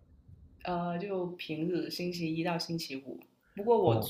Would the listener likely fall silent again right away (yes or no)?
yes